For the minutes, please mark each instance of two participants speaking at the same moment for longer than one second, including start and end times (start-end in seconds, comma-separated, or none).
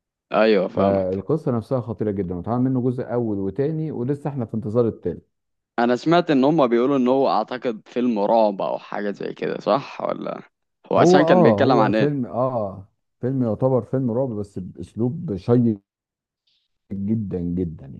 10.9-12.2